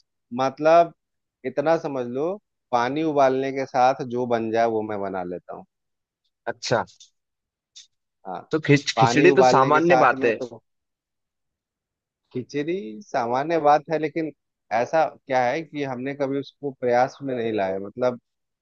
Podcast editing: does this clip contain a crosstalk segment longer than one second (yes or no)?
yes